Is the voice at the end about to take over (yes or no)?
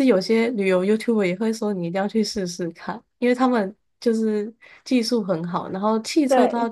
no